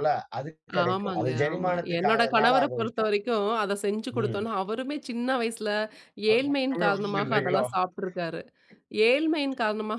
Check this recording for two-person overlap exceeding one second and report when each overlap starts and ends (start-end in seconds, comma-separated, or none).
0.9-3.1, 6.3-7.6